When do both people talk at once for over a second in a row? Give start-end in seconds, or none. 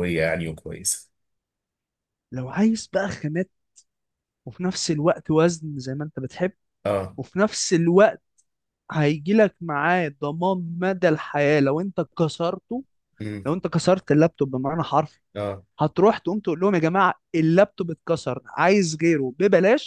none